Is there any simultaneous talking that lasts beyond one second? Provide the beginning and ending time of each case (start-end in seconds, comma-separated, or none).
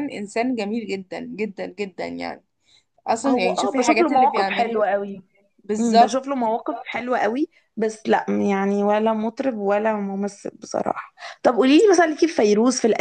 3.3-4.9